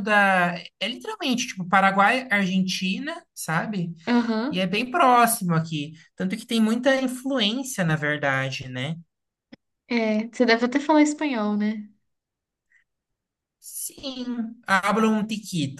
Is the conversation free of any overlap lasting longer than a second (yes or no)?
yes